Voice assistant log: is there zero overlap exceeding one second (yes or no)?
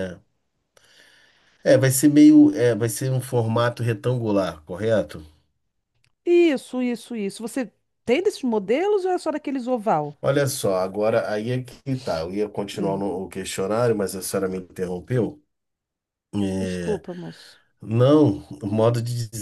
yes